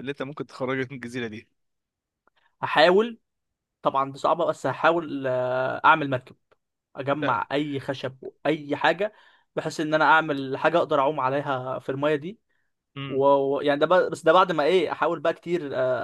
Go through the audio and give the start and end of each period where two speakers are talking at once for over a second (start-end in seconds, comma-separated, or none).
none